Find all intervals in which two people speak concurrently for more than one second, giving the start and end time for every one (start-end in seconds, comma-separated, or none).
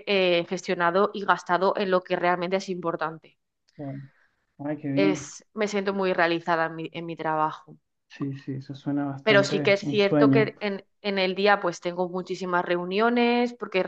9.2-10.5